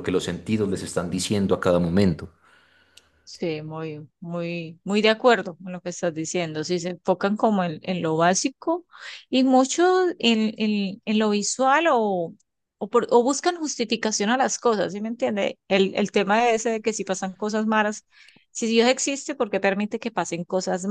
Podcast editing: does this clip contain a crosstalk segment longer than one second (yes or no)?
no